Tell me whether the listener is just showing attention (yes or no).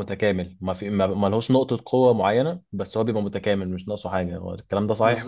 no